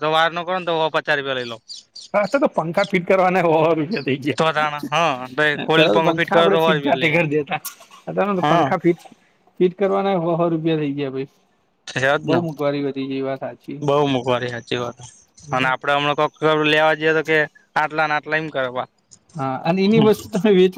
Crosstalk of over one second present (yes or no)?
yes